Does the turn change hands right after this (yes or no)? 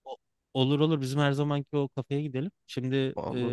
no